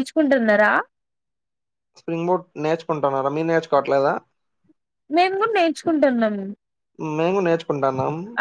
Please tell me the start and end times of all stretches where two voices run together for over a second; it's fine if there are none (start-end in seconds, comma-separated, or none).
none